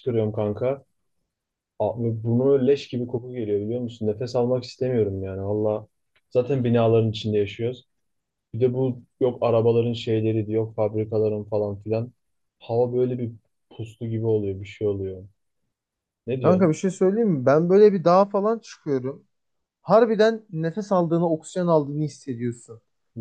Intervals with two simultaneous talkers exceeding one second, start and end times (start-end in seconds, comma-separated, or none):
none